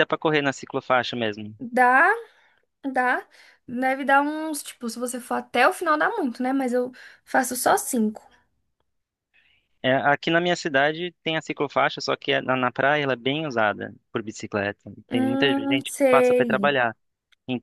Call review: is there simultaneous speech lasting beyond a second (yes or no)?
yes